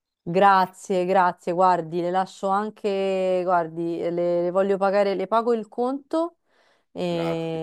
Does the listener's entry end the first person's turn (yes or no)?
no